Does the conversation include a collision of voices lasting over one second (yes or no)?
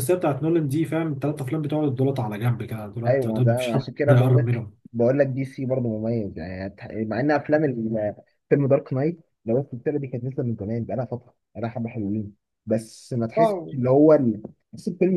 yes